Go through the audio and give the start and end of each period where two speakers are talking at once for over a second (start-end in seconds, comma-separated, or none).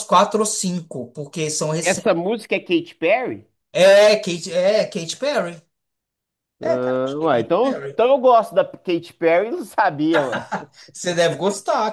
6.6-8.0